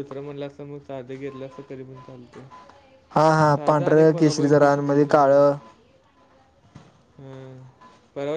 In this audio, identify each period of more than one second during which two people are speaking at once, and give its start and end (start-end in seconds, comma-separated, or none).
3.5-5.4